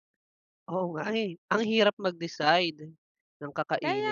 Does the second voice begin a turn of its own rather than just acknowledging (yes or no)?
yes